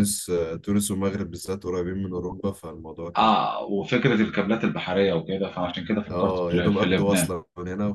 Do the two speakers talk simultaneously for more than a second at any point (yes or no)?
yes